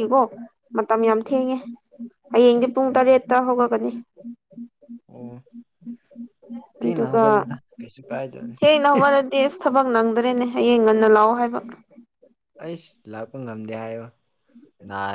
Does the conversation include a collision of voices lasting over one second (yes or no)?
no